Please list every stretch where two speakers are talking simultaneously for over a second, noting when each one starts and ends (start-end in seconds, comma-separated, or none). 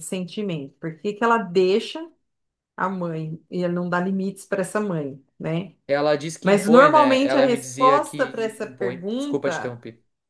6.4-9.8